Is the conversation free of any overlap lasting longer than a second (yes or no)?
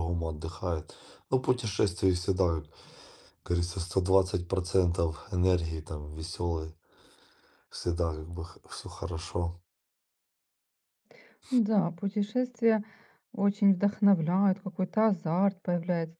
yes